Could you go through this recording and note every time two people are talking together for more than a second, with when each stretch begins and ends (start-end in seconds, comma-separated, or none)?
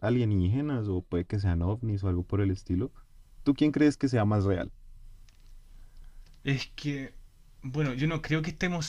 none